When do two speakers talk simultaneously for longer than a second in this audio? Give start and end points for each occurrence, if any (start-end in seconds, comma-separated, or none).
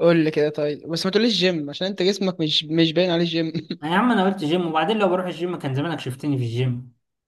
none